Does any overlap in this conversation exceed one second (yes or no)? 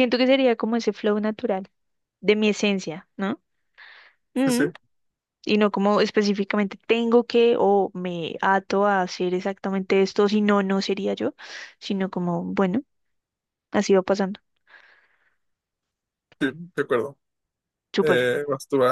no